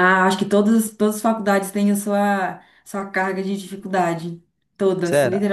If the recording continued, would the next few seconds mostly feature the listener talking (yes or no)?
yes